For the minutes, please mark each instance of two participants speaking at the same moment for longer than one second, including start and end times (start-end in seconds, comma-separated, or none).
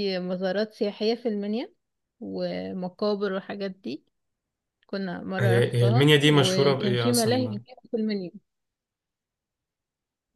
5.4-7.6